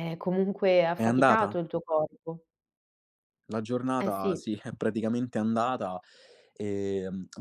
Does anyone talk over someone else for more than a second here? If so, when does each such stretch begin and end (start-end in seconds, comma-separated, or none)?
none